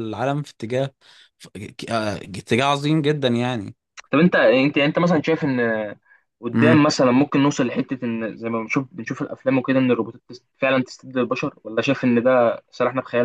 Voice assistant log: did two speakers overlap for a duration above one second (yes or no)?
no